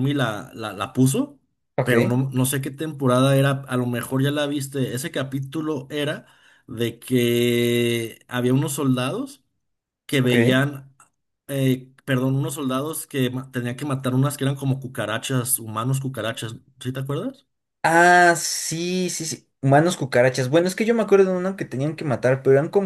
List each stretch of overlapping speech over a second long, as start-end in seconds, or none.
none